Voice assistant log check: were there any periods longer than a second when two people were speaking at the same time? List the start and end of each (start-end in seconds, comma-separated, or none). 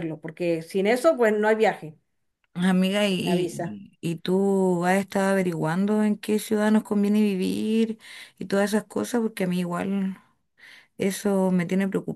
none